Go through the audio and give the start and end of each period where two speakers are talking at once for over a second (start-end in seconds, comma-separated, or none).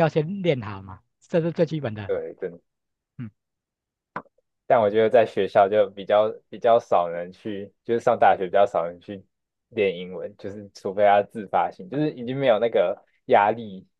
none